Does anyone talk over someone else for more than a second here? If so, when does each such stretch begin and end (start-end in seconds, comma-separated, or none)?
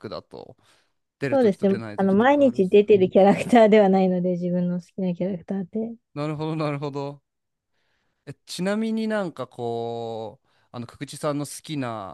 1.3-2.9